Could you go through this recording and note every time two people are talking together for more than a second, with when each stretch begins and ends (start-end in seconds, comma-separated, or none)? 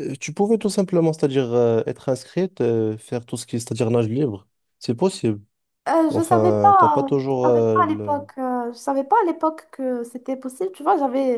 6.1-8.2